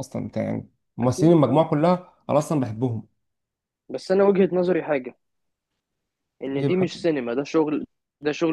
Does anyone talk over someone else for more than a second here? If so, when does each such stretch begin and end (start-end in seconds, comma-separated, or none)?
none